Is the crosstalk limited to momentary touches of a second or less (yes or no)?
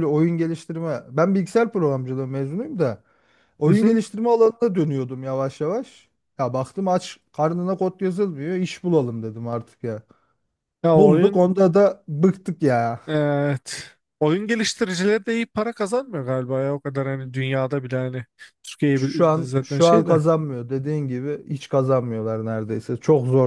no